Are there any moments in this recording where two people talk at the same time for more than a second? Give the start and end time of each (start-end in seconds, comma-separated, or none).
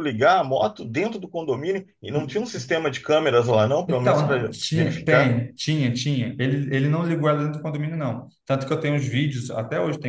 3.9-5.4